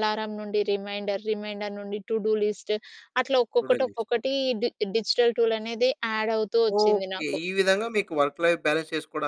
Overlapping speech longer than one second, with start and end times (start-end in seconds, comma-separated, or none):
none